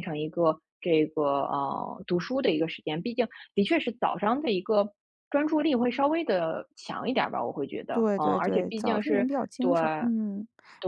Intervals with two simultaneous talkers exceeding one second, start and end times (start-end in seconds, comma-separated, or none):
7.9-9.7